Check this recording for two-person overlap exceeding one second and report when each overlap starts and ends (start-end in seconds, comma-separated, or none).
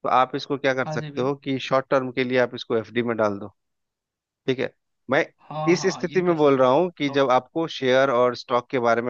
5.7-7.4